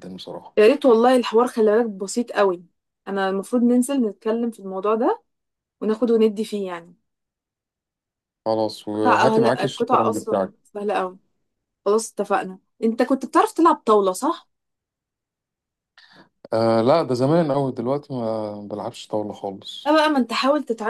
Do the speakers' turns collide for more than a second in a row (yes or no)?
yes